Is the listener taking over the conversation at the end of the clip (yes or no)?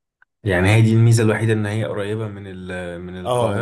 yes